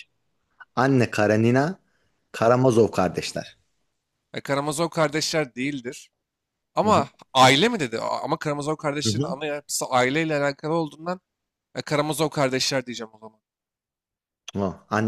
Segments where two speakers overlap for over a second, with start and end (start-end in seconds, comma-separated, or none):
none